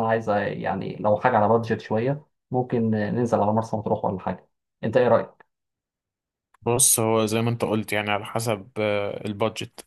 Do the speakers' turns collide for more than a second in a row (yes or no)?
no